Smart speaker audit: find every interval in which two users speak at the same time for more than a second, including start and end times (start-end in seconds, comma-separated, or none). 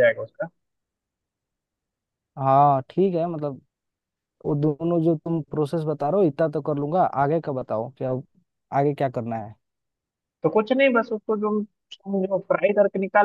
none